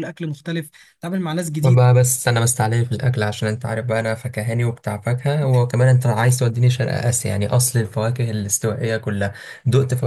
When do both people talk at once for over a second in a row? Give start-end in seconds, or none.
none